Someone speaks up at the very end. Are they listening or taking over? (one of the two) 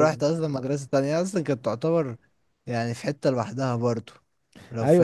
taking over